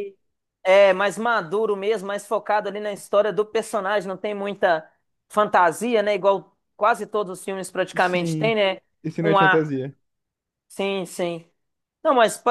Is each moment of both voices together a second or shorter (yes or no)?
yes